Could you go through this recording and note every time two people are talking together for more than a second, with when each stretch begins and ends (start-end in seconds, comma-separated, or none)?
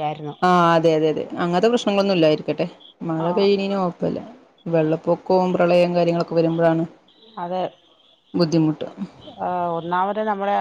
none